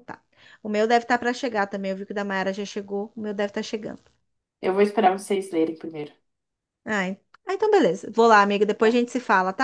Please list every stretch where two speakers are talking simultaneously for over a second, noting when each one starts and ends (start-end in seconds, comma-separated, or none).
none